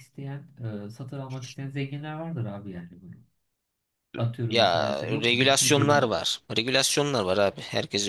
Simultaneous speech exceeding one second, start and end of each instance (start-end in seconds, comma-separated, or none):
4.5-6.1